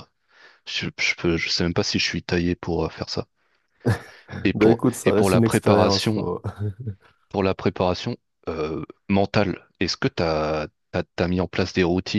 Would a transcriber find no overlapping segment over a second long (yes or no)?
no